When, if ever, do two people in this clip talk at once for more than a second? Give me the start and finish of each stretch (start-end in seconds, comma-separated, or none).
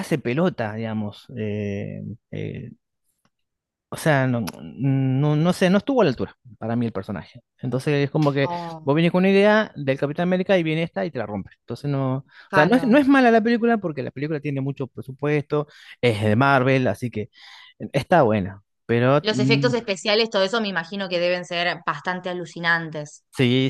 none